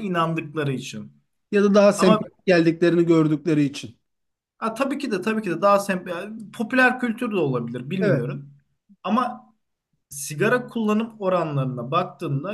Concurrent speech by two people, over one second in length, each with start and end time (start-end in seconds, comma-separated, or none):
none